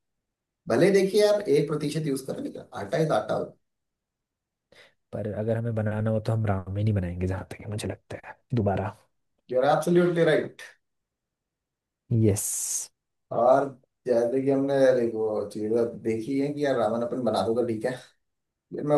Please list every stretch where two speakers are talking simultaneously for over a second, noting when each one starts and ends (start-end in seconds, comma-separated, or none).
none